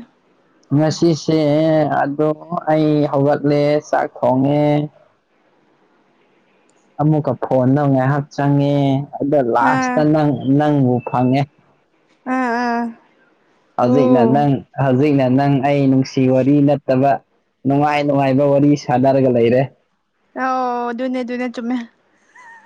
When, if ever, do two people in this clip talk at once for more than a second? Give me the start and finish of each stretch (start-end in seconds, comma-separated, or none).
none